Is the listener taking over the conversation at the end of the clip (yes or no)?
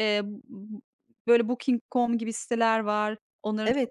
no